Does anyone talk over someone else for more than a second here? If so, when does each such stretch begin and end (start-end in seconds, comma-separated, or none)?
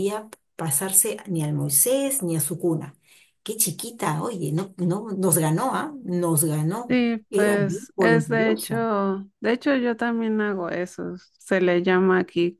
6.9-8.8